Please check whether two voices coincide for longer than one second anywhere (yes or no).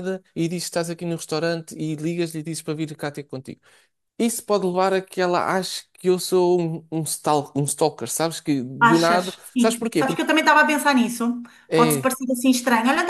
yes